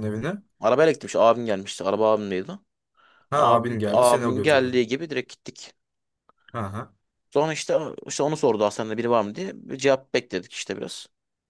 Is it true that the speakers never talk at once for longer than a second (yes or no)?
no